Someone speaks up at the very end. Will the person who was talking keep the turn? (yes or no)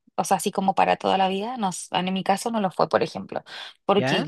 yes